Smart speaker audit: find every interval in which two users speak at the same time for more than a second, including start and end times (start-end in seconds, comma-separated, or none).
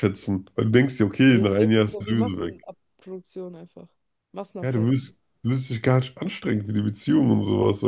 1.3-2.7